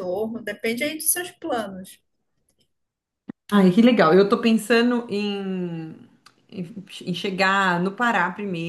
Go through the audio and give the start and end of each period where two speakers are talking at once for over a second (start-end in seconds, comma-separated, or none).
none